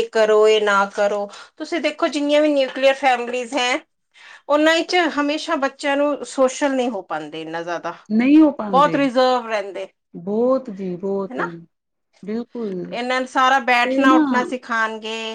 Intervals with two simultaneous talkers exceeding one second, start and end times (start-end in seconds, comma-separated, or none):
none